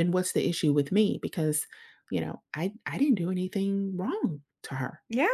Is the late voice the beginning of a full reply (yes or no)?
yes